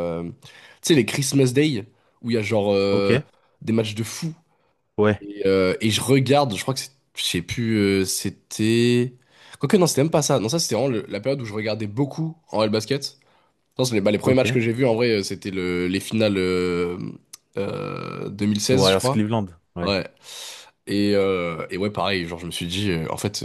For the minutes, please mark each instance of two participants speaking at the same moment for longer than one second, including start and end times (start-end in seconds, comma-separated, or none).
none